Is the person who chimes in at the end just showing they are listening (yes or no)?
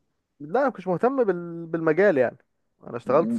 no